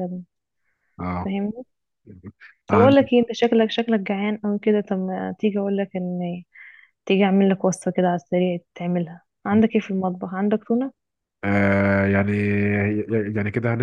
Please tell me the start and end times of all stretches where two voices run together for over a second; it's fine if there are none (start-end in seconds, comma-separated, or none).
none